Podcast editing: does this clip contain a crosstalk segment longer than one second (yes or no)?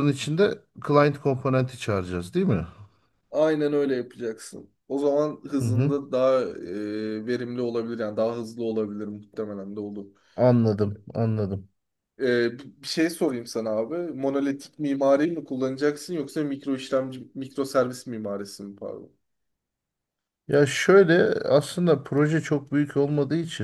no